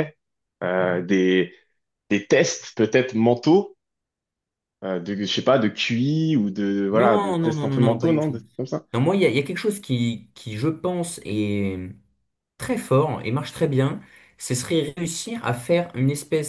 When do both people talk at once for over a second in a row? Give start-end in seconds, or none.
6.9-8.4